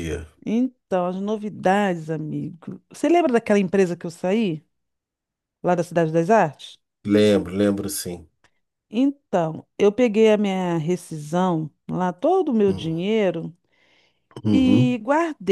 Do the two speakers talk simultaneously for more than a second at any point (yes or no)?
no